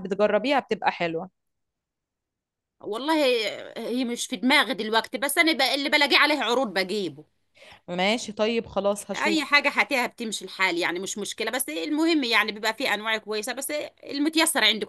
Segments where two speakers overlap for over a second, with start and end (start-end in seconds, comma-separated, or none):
none